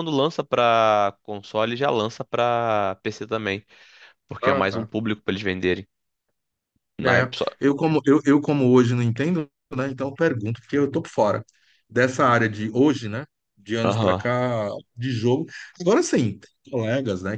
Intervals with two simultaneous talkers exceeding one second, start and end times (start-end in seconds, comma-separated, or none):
none